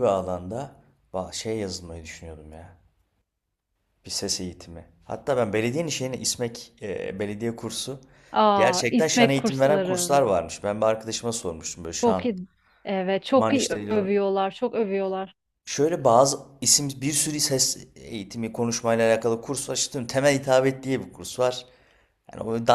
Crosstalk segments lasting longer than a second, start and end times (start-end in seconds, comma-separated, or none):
8.6-10.1